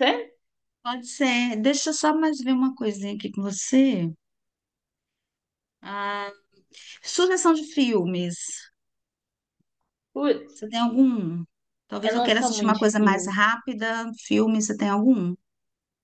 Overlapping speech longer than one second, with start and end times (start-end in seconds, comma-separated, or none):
12.0-13.4